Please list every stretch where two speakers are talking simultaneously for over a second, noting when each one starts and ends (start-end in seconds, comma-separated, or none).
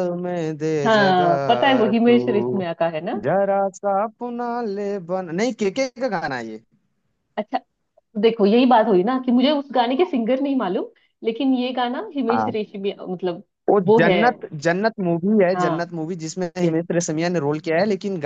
0.8-2.6